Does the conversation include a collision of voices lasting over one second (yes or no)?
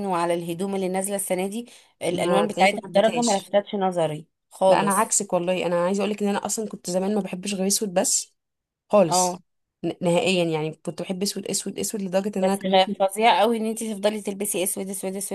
yes